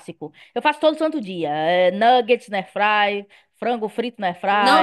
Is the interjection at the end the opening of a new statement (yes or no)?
yes